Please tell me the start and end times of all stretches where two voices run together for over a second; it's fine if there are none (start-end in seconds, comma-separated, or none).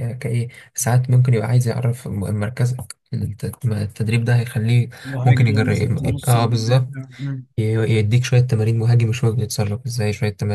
5.2-6.9